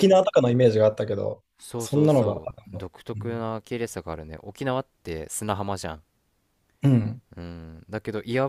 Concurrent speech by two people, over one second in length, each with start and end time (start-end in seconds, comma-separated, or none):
1.6-3.4